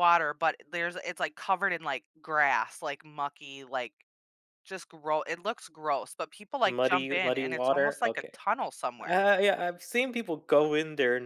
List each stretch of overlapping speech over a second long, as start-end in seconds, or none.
6.7-8.3